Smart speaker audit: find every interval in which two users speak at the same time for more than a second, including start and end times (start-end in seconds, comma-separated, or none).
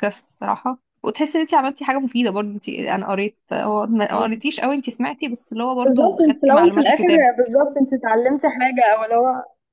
5.8-7.3